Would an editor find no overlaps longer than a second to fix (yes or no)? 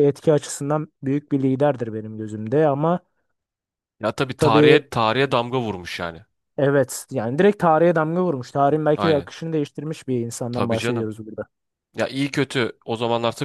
yes